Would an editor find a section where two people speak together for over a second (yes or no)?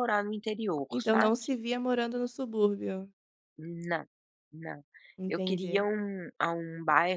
no